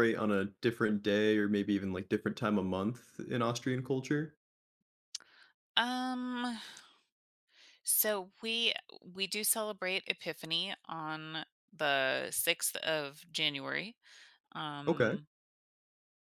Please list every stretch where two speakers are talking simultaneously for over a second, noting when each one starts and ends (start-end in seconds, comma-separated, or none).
none